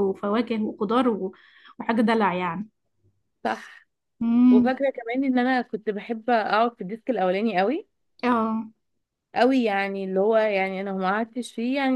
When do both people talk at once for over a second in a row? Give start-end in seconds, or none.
none